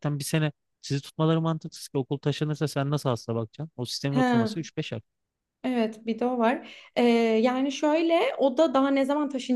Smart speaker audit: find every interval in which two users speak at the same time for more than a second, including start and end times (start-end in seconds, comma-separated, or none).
none